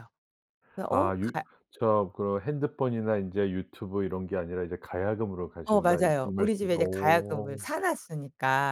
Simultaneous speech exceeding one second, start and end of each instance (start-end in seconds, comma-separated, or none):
5.6-7.6